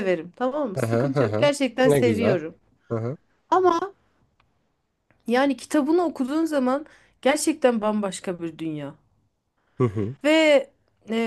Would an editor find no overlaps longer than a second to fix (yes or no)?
no